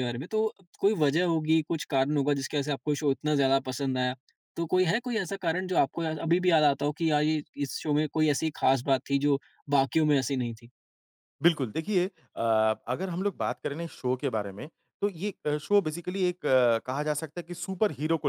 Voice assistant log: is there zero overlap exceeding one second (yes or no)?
yes